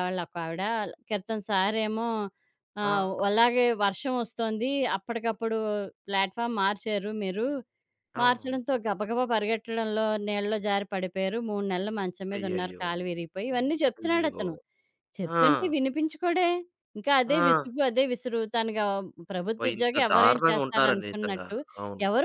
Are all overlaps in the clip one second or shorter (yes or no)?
no